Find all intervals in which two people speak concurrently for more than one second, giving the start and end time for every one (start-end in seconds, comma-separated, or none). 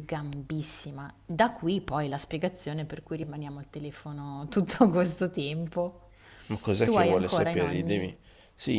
6.8-8.1